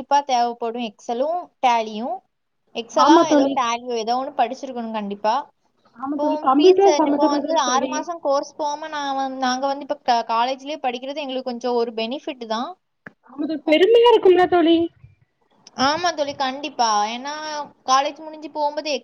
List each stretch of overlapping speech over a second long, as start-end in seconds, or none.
6.2-7.9